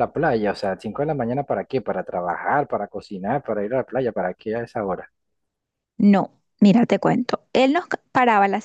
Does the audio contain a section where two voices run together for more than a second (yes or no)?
no